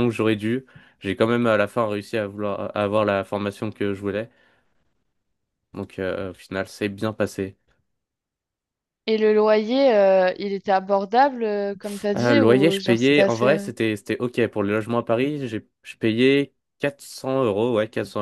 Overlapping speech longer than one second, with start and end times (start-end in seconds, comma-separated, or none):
12.2-13.7